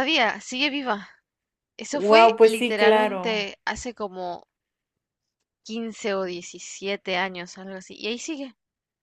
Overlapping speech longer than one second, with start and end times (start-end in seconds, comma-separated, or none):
1.9-3.5